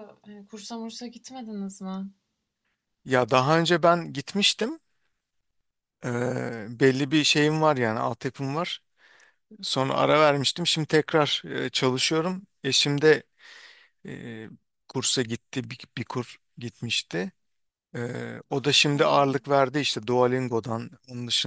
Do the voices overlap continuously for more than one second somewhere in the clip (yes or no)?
no